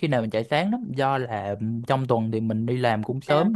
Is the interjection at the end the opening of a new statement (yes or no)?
no